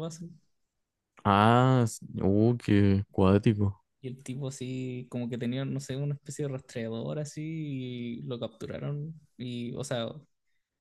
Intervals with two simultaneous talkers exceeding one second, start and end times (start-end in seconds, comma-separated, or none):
none